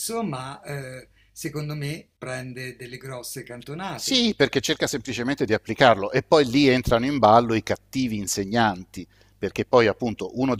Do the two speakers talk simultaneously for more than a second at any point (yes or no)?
no